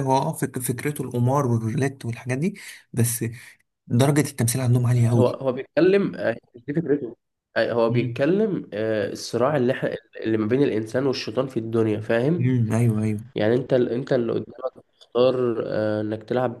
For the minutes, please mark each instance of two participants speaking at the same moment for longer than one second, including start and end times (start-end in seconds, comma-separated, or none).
none